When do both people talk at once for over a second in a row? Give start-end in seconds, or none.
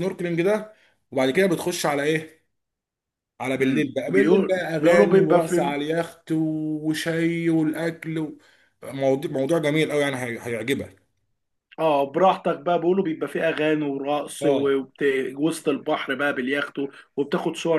3.6-5.7